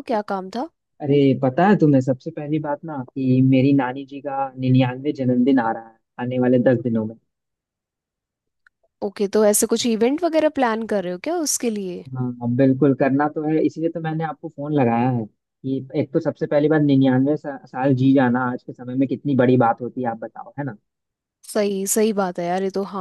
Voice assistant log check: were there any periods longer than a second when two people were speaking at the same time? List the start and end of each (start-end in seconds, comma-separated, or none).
none